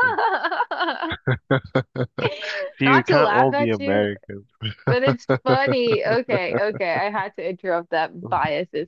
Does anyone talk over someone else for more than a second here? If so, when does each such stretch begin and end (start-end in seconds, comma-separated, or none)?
2.8-4.1